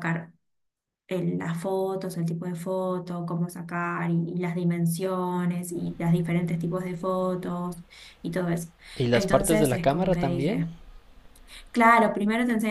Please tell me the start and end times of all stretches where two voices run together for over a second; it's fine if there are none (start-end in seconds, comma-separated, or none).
9.1-10.7